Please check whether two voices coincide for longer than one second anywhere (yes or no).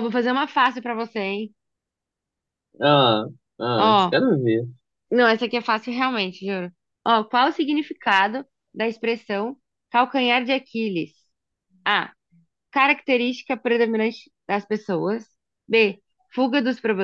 no